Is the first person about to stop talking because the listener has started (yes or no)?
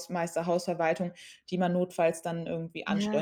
yes